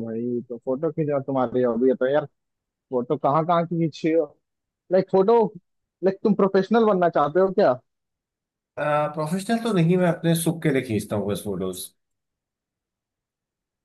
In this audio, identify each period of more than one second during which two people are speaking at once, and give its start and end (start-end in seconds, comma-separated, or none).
none